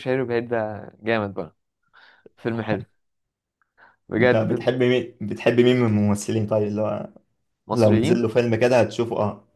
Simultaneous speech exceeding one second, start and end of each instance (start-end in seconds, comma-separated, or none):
none